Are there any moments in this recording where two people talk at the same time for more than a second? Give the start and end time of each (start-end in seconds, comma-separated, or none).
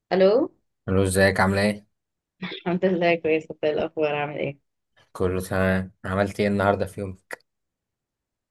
none